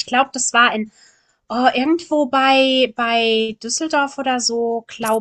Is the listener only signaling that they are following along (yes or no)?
yes